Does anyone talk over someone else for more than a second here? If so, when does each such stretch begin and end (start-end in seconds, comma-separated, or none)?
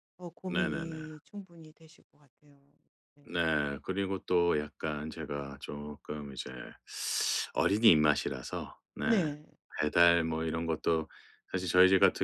none